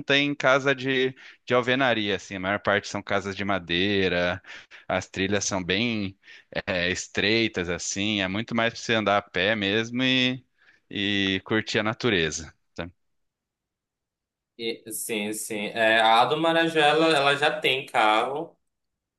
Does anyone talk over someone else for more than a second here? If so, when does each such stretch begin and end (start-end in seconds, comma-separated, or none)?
none